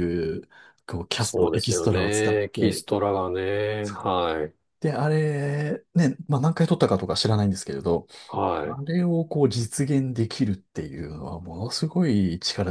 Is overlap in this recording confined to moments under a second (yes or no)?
no